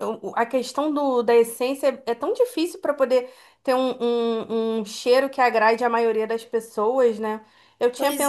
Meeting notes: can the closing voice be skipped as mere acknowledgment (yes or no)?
yes